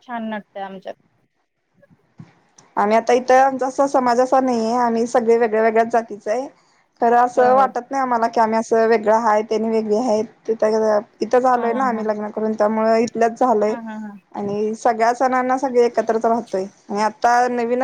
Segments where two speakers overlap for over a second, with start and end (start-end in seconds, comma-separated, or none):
none